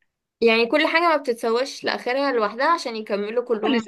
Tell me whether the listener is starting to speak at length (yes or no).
yes